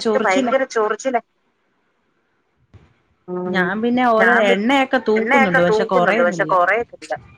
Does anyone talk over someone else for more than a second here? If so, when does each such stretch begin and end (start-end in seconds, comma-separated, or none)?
5.2-6.5